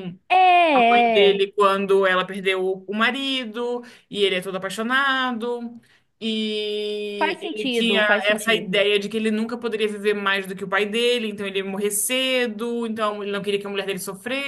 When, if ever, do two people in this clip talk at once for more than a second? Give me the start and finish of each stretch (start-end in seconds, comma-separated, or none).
7.2-8.8